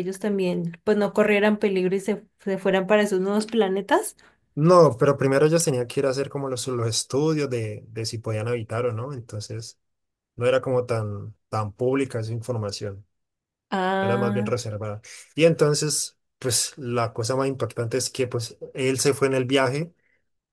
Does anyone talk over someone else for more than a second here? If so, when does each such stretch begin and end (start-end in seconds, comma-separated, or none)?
none